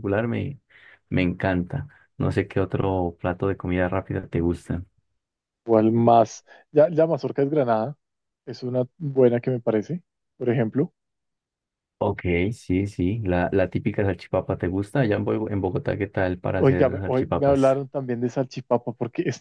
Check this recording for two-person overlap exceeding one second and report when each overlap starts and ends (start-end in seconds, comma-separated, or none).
16.6-17.8